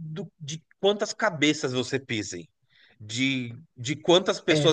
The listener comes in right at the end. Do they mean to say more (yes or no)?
no